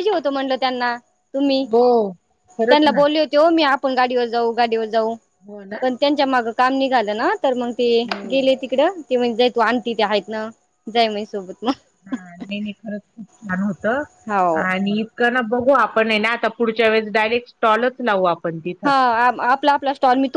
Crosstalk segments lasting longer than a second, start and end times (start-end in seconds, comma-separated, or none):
none